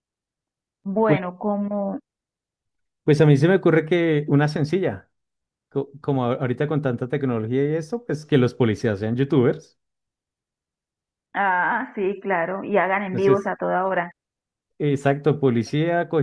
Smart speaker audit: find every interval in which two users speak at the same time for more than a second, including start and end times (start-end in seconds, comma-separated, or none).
none